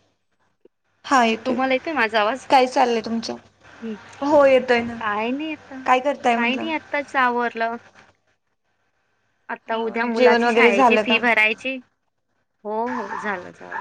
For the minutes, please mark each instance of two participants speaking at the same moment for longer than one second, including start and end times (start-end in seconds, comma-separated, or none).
9.7-11.2